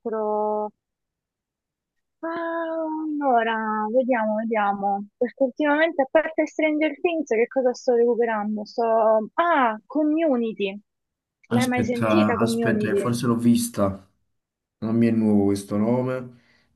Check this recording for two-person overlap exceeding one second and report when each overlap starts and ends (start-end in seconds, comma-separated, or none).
11.5-13.2